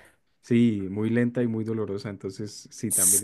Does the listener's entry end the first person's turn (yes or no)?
no